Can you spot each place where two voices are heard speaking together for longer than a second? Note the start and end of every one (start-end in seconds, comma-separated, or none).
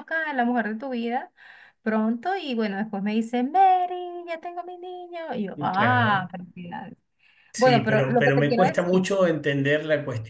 7.6-9.0